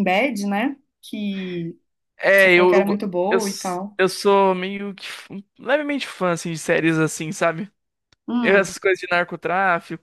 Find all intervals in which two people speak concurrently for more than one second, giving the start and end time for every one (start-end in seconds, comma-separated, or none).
2.4-4.0